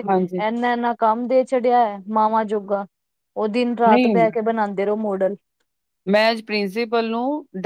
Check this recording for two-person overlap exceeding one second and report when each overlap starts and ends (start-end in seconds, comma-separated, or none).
none